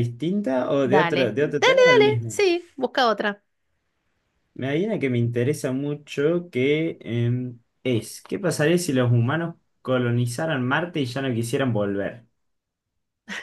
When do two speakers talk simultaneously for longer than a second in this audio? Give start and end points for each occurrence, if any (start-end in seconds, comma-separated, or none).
0.8-2.4